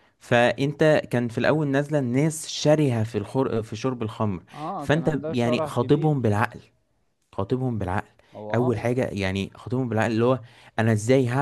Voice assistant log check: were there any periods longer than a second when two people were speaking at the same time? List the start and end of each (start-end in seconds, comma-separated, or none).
4.5-6.2